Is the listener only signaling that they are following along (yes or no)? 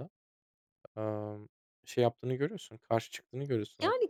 no